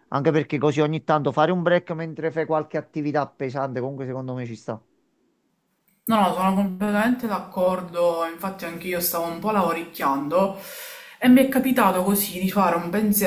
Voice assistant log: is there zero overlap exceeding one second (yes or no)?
yes